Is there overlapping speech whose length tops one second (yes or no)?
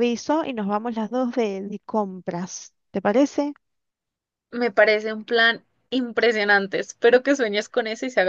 no